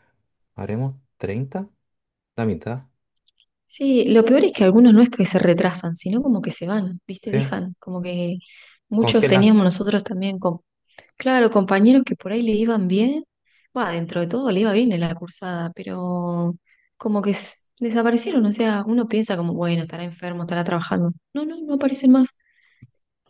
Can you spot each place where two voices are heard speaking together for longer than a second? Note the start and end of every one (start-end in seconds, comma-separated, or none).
none